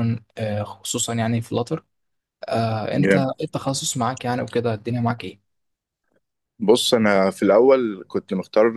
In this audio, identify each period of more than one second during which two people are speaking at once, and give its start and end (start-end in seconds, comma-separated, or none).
none